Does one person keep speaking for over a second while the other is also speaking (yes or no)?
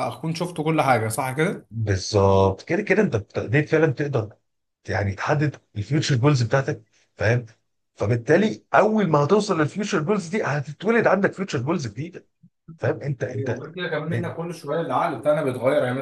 no